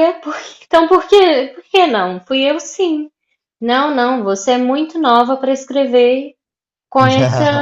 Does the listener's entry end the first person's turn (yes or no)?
no